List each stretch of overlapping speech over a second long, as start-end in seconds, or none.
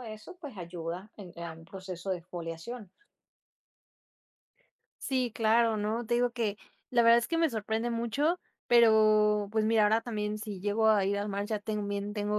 none